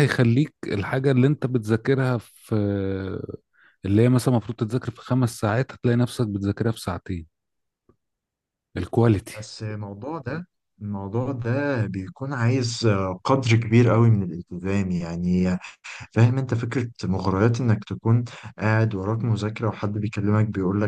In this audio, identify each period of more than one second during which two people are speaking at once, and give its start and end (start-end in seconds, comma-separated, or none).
none